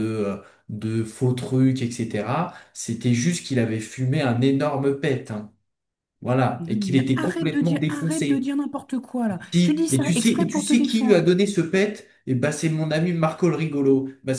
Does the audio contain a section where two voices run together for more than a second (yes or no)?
yes